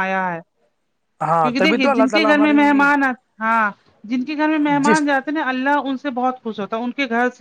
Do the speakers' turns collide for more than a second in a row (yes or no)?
yes